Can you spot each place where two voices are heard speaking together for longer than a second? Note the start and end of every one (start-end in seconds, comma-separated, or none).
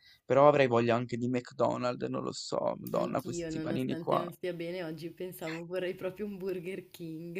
2.9-4.2